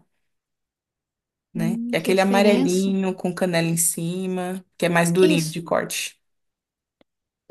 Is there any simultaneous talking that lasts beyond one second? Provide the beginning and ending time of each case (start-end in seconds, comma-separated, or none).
1.5-3.0